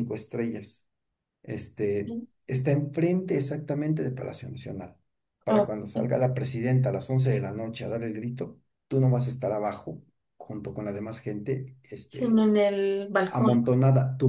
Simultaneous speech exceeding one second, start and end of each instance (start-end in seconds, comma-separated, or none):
none